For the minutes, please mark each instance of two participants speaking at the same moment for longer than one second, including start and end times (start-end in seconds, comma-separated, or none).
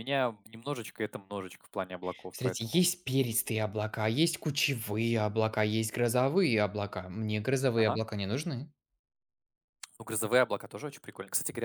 none